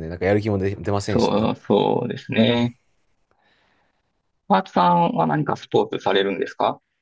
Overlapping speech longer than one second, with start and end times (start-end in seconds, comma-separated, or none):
none